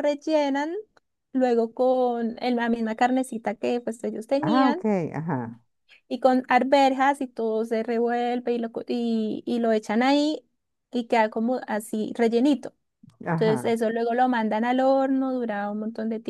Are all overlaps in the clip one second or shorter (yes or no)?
yes